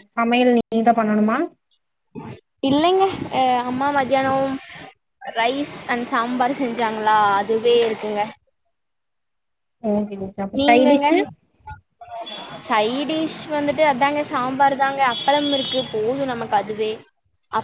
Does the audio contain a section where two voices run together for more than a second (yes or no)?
no